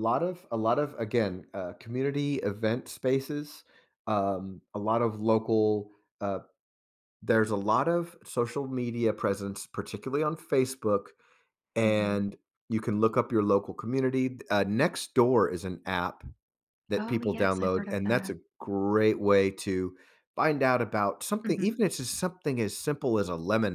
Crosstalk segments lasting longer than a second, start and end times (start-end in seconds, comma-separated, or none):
17.0-18.3